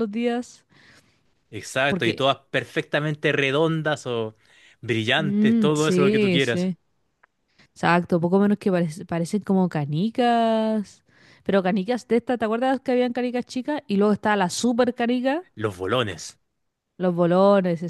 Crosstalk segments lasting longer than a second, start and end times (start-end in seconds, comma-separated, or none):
5.2-6.7